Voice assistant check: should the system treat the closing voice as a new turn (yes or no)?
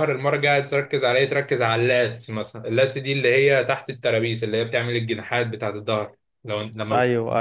no